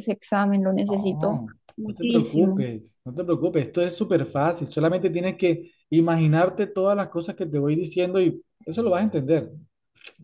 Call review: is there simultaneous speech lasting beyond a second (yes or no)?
yes